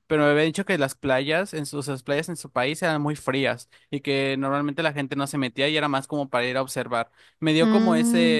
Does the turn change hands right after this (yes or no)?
no